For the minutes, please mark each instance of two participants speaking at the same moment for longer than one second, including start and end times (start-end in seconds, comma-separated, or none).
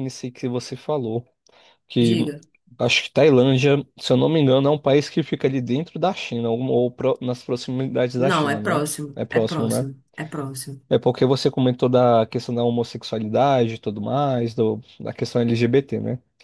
8.2-9.8